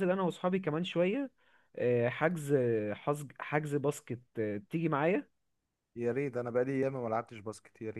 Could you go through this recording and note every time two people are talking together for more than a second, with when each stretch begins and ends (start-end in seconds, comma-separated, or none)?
none